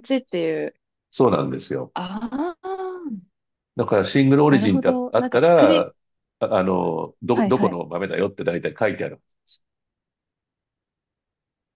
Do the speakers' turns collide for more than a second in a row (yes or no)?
yes